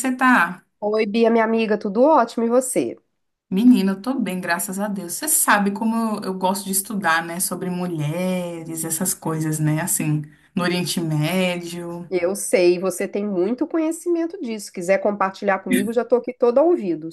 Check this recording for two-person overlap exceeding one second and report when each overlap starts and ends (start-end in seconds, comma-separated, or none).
none